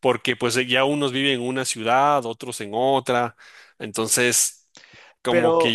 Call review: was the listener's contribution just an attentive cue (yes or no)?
yes